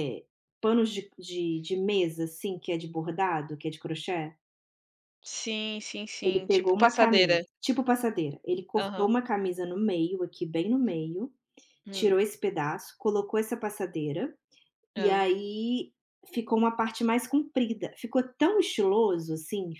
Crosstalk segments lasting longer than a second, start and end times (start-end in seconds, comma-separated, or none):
6.2-7.4